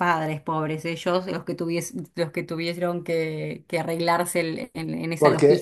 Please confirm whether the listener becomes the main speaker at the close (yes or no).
yes